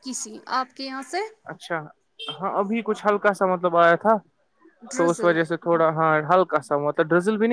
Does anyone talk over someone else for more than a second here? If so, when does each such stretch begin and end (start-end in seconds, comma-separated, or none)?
none